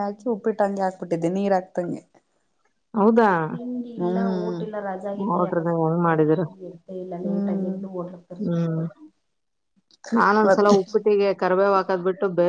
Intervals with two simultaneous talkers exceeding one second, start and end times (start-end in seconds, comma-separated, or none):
none